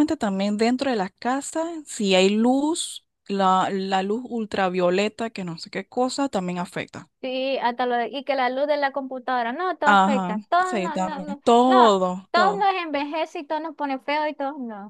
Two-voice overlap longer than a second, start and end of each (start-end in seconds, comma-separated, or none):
9.8-12.7